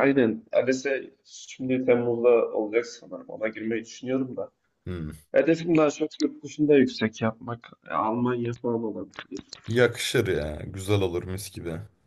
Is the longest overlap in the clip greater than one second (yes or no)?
no